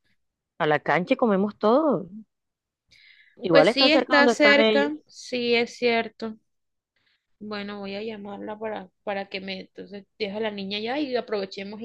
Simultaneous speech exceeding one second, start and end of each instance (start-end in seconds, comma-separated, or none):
3.5-4.9